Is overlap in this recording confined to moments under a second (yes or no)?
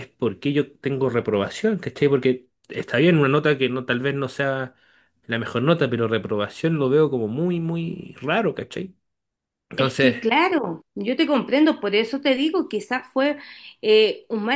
yes